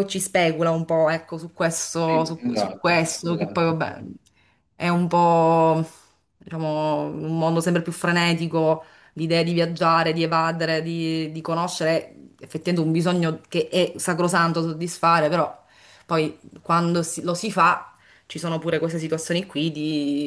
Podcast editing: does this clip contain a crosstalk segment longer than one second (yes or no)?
yes